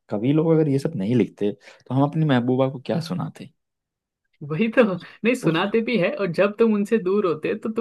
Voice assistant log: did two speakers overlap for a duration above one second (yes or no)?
no